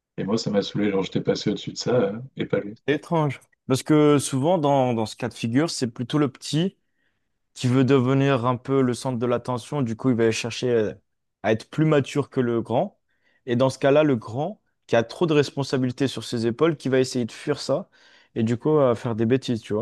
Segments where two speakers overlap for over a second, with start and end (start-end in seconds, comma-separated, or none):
none